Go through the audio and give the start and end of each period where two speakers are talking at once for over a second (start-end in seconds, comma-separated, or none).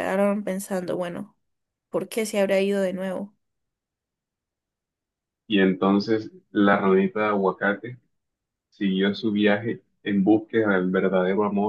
none